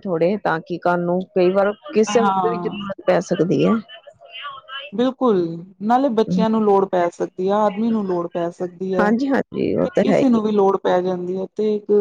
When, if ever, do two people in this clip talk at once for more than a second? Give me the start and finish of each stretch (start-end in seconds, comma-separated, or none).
none